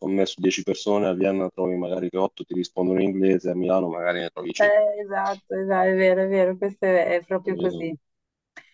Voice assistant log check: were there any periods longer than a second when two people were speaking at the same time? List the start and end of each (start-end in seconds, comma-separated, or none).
none